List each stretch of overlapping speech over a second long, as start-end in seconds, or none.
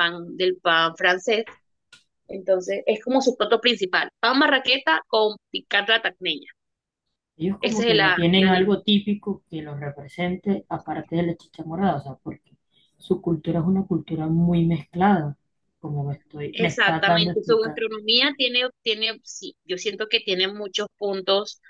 7.6-8.9, 16.5-17.8